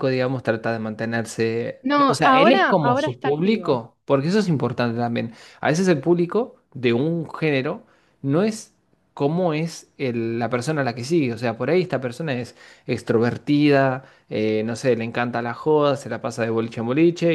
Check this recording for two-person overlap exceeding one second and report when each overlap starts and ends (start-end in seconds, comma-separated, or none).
1.8-3.8